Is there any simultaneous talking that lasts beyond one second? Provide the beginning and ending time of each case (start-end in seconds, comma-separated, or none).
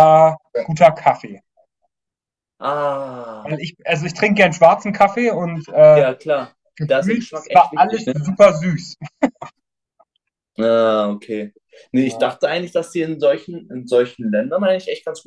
6.8-8.1